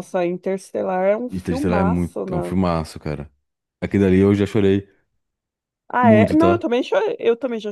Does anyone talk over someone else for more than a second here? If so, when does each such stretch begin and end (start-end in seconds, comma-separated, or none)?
1.3-2.6